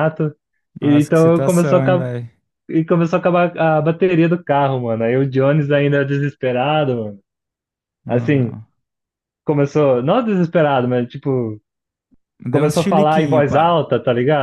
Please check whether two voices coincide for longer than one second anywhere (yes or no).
yes